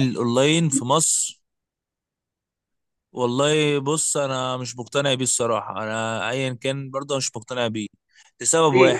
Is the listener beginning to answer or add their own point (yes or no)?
yes